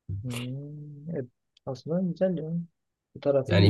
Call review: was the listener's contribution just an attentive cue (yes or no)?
no